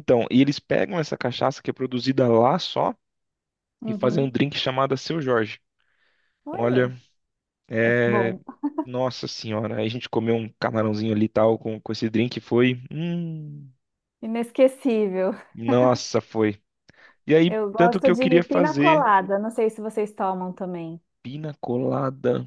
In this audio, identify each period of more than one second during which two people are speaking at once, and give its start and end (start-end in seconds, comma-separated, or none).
17.5-19.1